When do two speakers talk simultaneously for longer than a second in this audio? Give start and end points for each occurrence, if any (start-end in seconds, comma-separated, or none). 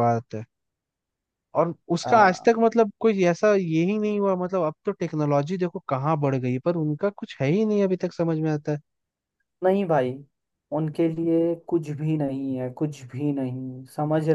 none